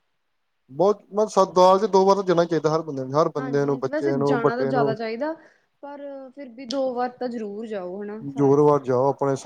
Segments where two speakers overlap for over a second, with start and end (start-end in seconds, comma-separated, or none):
3.4-4.9